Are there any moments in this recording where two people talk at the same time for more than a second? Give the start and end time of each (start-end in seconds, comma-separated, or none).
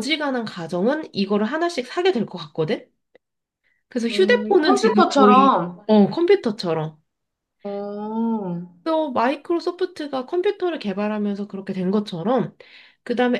4.1-5.9